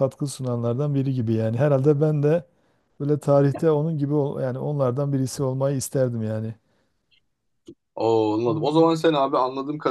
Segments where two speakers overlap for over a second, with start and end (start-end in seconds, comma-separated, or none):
none